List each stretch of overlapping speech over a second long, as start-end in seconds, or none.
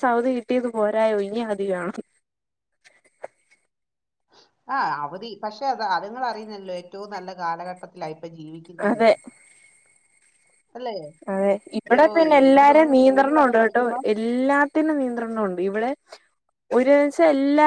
11.9-14.0